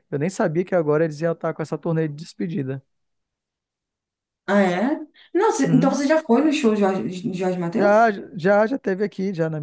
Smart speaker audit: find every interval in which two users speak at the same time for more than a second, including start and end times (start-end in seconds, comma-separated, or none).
none